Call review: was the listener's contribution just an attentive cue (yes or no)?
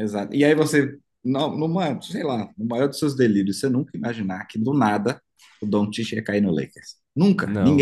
no